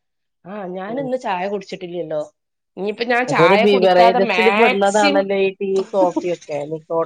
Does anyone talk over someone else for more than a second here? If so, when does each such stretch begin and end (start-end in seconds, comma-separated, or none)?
3.3-5.3